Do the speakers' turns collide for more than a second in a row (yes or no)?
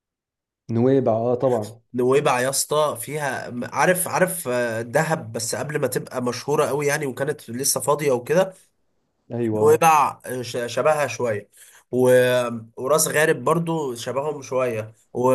no